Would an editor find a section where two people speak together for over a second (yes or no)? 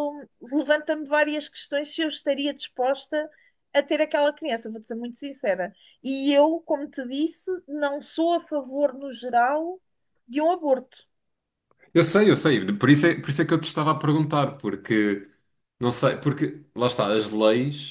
no